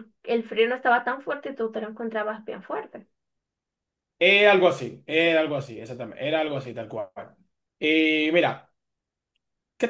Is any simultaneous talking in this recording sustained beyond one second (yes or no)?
no